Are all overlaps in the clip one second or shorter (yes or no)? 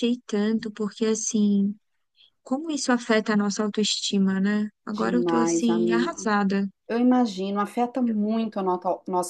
no